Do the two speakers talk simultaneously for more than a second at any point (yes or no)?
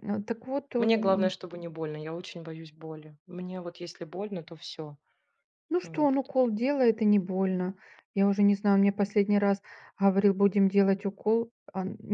no